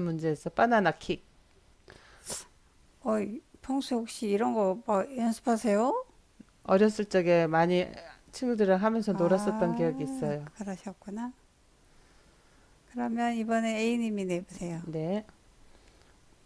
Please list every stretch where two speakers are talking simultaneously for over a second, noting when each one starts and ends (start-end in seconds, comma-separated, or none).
9.1-10.5